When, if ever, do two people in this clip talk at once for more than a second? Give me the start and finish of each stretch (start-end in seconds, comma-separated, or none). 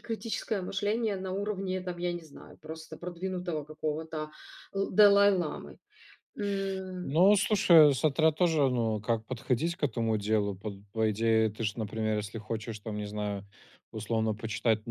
none